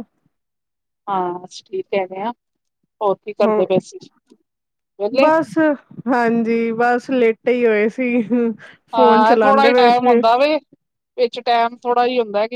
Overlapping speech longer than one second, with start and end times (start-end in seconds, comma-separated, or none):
8.9-10.2